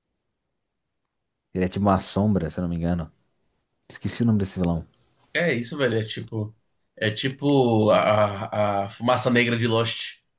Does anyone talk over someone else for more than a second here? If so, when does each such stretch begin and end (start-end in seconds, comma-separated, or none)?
none